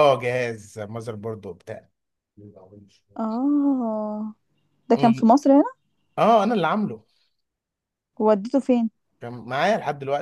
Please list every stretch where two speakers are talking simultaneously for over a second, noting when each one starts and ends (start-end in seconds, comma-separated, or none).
none